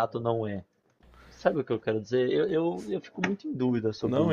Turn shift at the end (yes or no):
yes